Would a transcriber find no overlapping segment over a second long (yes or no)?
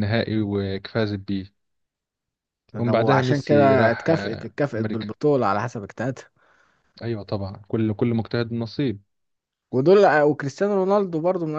no